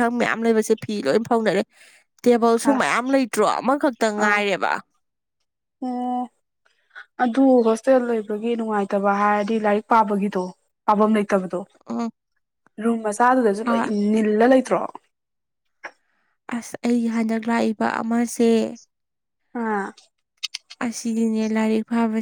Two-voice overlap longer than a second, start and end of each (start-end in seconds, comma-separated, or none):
none